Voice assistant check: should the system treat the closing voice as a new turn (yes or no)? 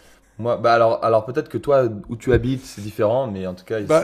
yes